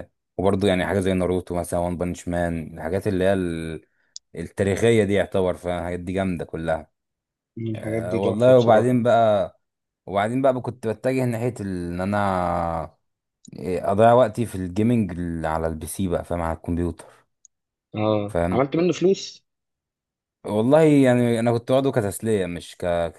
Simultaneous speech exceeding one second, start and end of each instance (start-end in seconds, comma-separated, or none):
7.7-9.0